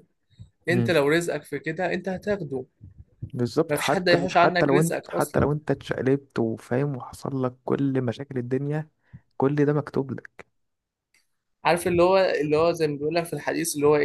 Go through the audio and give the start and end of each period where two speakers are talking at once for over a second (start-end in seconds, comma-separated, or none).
3.7-5.5